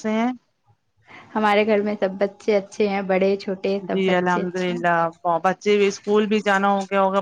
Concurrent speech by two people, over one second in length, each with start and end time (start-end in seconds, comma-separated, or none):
none